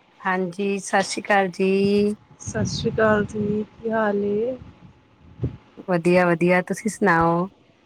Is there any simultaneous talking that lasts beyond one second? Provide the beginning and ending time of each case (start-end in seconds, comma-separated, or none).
none